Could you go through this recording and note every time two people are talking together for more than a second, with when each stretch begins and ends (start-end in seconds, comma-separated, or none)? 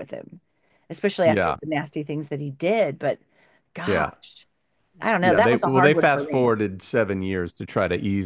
5.2-6.5